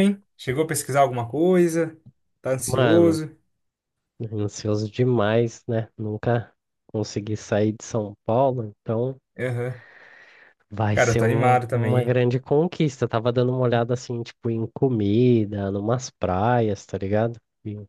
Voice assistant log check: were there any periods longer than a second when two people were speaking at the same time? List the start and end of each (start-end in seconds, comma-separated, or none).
10.9-12.2